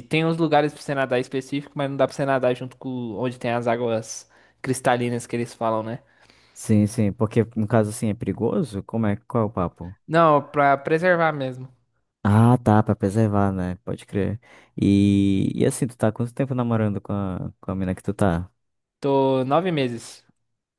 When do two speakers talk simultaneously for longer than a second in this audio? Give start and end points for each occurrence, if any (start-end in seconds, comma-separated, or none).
none